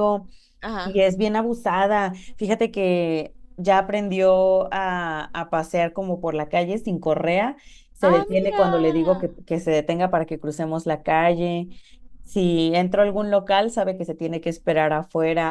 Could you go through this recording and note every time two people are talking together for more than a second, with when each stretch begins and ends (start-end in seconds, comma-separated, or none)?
8.0-9.2